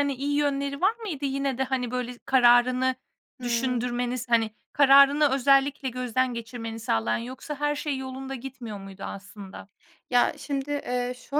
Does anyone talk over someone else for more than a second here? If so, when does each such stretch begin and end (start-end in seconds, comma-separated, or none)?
none